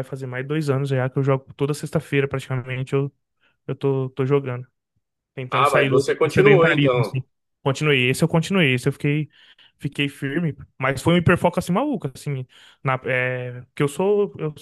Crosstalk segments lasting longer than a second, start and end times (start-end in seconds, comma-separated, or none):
5.5-7.2